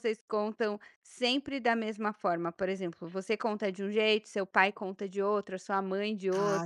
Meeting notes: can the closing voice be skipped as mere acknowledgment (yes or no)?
no